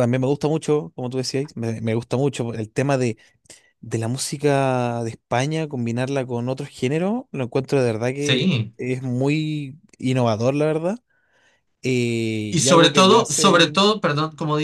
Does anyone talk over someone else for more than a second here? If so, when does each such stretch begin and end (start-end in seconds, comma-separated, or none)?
12.5-13.8